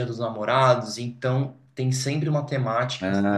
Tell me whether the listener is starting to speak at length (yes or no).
no